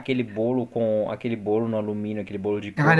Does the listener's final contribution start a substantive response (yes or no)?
yes